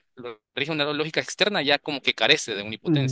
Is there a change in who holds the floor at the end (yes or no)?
yes